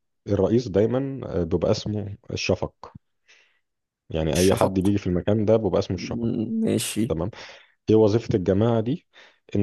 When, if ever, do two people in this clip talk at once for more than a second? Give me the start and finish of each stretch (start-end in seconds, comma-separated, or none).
none